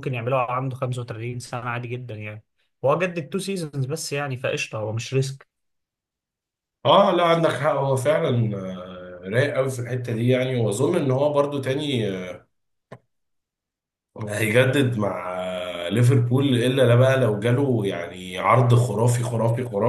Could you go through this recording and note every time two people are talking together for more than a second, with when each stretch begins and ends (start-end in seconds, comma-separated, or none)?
none